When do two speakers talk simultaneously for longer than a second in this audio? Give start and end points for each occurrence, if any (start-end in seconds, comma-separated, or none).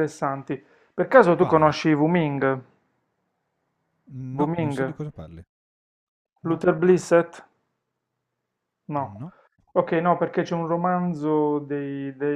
none